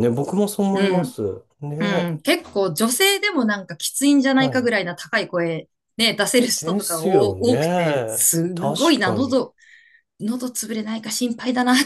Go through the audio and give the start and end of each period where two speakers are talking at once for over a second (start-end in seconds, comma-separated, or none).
6.6-9.4